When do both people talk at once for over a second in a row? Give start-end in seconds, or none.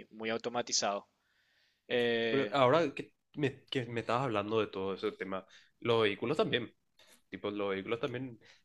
none